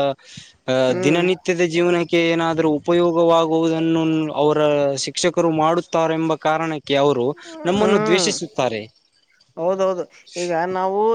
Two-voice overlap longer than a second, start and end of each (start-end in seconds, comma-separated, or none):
none